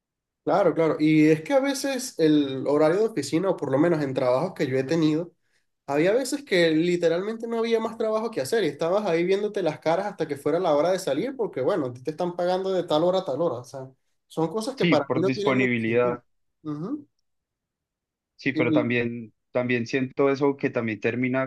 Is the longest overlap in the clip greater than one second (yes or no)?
yes